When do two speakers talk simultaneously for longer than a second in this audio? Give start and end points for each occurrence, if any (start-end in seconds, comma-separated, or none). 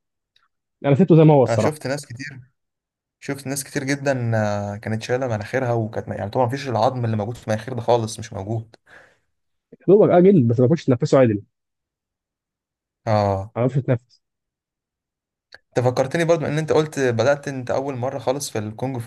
none